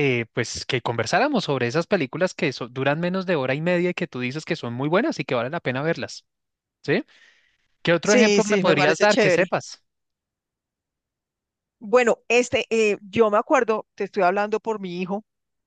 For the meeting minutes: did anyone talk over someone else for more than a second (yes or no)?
yes